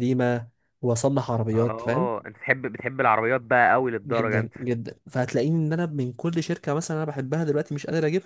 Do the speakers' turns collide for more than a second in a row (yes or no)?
no